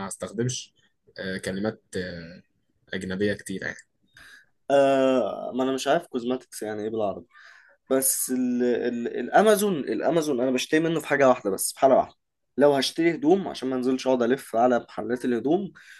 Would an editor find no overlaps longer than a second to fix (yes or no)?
yes